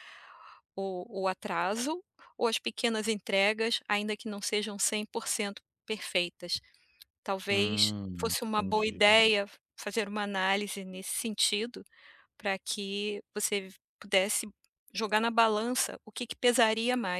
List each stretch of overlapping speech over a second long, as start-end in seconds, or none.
7.5-9.2